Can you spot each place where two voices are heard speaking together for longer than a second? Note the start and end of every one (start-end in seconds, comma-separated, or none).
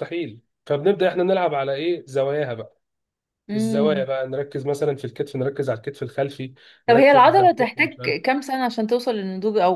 6.9-8.2